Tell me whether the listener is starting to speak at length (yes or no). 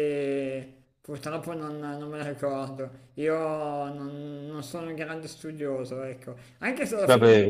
no